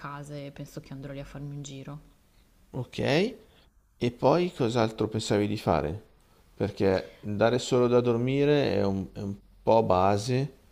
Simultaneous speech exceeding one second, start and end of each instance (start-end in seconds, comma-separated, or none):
none